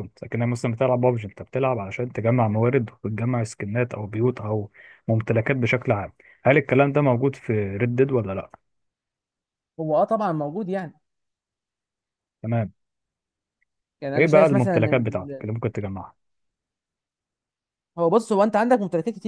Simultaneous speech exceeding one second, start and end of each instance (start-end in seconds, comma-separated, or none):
14.2-15.5